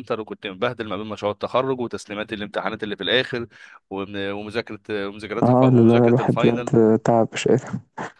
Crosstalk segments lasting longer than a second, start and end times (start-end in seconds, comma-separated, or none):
5.4-6.7